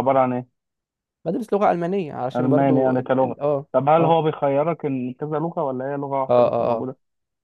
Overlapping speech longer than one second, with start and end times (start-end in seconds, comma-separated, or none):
2.4-4.1